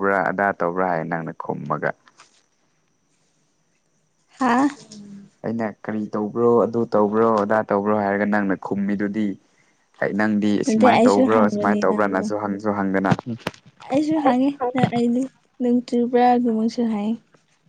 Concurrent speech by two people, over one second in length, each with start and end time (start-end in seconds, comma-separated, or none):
10.7-12.2